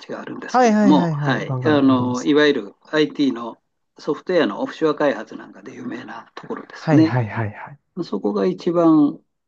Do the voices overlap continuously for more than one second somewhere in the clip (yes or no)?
yes